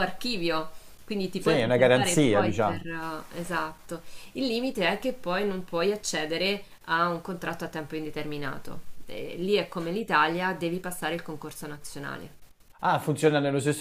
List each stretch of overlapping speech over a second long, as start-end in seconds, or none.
1.4-2.8